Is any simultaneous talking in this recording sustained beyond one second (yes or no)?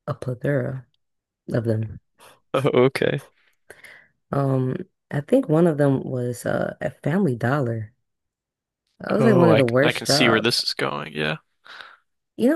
yes